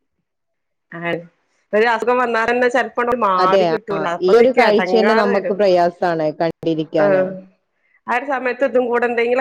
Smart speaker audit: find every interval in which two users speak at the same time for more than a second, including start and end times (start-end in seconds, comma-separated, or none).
3.4-5.6